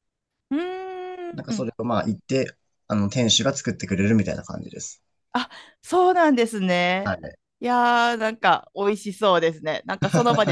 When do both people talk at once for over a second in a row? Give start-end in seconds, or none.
none